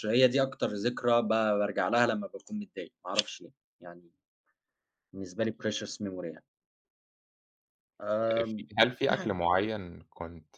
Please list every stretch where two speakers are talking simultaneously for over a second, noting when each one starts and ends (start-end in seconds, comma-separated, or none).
none